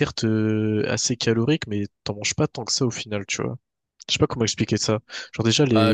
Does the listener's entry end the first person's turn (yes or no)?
yes